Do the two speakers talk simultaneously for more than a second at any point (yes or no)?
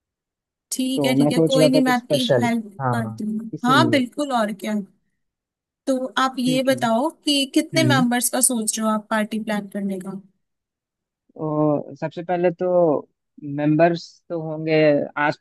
yes